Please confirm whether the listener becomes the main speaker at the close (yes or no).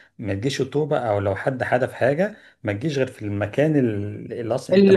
no